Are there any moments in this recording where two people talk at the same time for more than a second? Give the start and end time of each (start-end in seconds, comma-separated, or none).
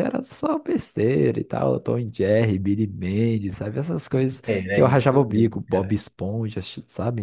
4.5-6.0